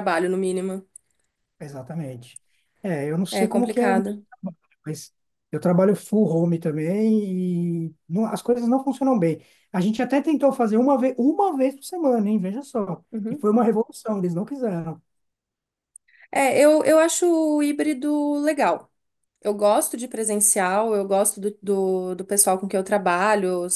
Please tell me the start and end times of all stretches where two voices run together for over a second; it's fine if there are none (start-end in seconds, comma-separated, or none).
none